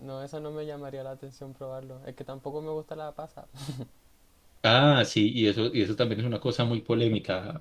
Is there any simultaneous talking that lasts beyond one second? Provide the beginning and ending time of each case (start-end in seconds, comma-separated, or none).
none